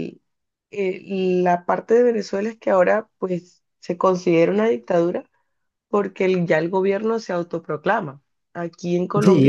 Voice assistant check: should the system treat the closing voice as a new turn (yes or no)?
yes